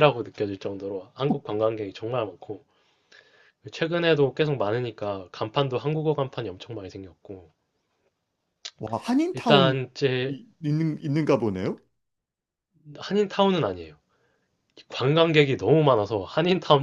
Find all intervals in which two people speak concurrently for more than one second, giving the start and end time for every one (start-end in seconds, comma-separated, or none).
none